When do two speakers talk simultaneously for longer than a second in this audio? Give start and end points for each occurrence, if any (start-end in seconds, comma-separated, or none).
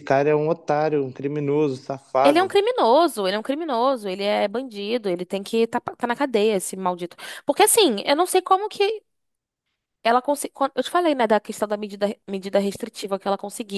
none